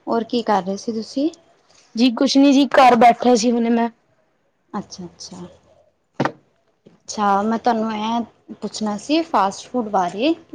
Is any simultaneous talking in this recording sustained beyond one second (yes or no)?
no